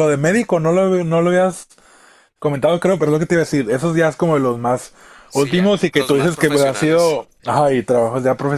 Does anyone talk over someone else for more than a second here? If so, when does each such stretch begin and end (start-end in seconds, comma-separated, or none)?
5.3-7.2